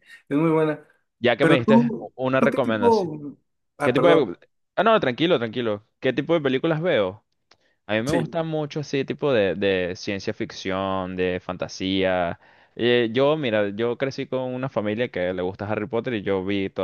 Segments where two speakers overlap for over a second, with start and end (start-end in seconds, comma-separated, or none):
1.4-3.1